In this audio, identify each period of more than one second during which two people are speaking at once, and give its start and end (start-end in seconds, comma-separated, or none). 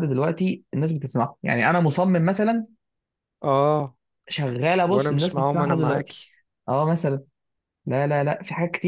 4.9-6.2